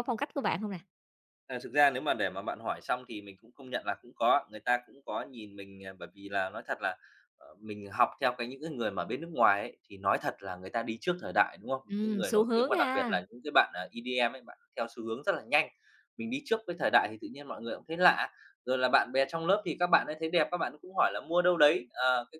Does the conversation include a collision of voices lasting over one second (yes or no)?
yes